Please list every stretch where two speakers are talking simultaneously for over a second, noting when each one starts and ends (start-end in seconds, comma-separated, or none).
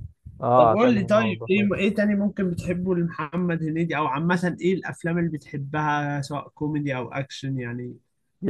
0.6-1.8